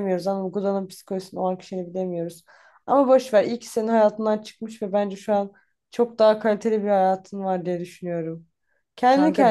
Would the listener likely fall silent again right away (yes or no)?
yes